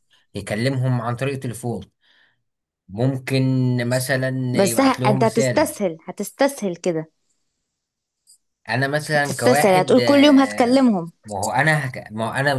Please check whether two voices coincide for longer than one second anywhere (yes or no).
yes